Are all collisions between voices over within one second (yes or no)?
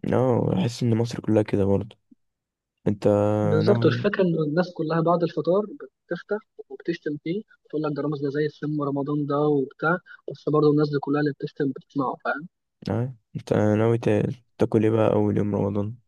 yes